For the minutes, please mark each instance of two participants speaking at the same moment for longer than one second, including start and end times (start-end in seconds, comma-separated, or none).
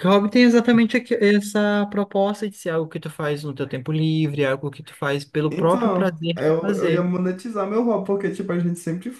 5.5-7.0